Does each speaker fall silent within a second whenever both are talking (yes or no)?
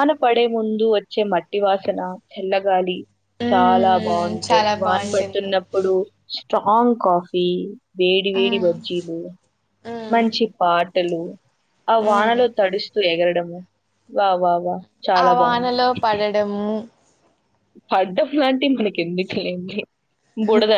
no